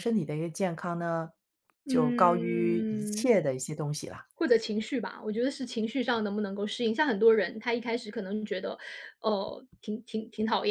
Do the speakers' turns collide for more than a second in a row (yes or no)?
yes